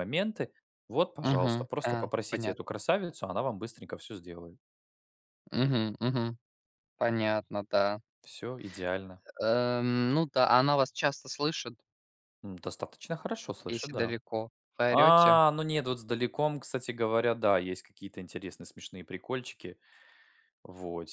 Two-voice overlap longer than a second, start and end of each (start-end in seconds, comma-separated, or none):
1.2-2.8